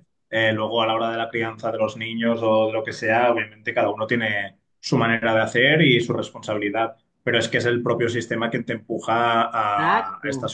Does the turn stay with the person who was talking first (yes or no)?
yes